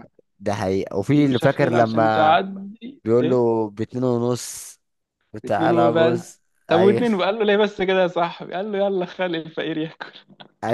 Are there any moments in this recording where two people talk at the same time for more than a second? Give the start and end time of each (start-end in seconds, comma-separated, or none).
1.1-2.4, 5.5-7.1